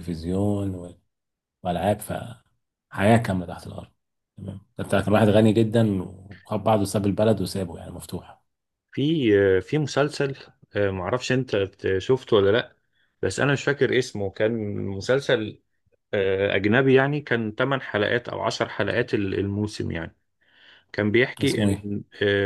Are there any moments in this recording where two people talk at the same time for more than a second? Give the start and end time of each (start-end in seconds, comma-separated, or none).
none